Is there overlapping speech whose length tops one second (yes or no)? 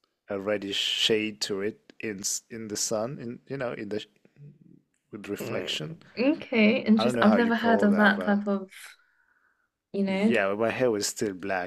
yes